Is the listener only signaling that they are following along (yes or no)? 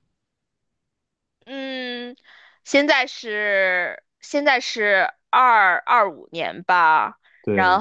yes